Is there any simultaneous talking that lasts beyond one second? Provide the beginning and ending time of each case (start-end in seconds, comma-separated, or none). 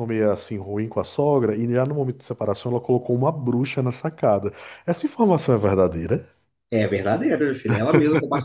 none